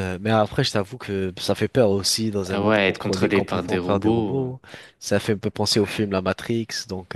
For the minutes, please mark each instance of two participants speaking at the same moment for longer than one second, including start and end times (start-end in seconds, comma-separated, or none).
2.5-4.6